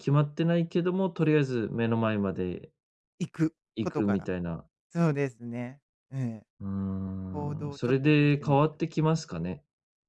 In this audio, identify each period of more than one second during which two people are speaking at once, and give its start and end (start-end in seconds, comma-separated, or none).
7.3-9.1